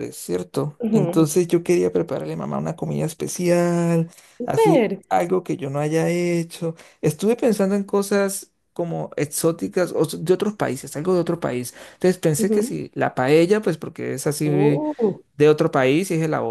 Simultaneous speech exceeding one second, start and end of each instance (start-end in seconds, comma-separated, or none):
none